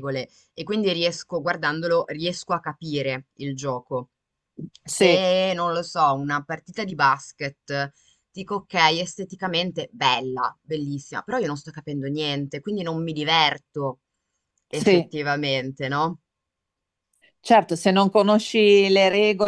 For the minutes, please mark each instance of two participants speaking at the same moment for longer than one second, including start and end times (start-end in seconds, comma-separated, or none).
none